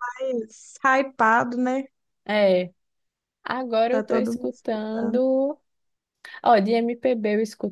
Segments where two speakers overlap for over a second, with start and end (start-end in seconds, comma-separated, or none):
3.9-5.2